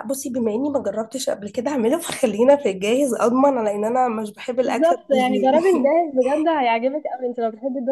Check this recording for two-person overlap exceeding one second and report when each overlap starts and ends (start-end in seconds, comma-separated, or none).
4.6-5.9